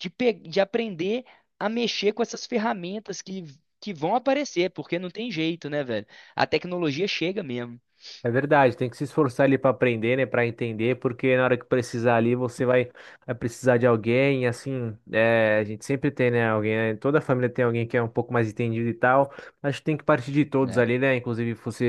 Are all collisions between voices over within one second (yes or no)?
yes